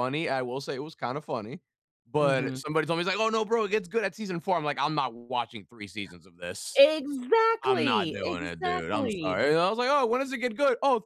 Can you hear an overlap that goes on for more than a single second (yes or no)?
yes